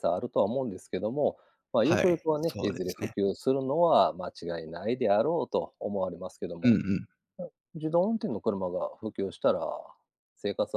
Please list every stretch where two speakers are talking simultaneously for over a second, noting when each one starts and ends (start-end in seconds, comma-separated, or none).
1.8-3.1